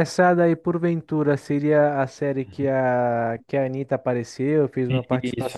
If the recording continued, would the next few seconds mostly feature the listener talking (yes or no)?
yes